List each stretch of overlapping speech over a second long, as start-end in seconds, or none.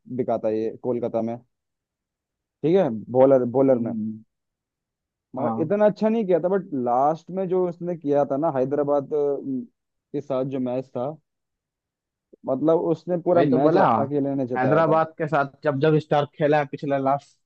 none